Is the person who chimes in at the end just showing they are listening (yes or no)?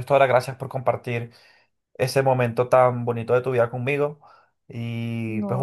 yes